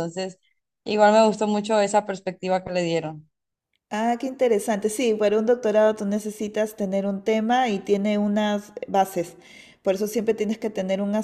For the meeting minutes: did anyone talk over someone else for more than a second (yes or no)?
no